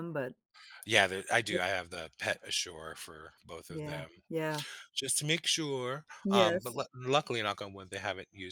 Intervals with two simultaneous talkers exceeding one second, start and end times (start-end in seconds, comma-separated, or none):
none